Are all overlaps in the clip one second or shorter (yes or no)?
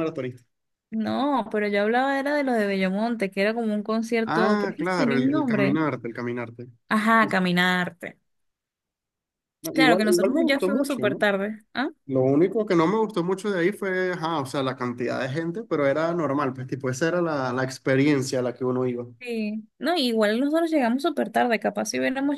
no